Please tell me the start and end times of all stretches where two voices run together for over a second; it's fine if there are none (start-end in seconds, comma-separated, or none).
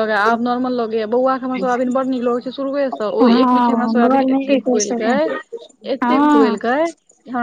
3.4-5.2